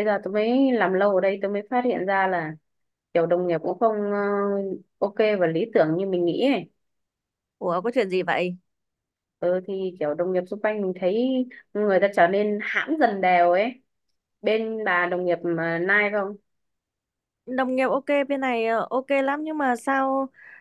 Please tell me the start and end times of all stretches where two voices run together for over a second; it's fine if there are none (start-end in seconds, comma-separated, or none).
none